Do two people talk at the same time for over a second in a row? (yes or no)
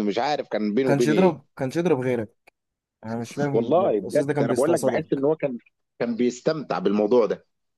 yes